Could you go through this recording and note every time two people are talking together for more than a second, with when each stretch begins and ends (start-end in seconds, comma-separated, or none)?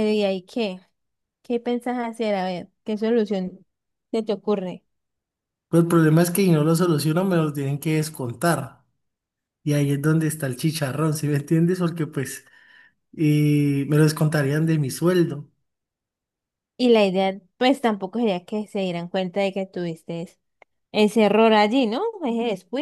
none